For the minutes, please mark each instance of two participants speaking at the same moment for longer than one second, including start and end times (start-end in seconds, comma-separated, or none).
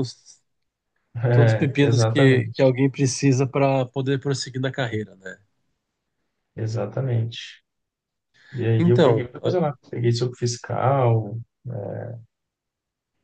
1.3-2.7